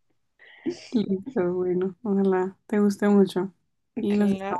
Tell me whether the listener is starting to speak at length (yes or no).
yes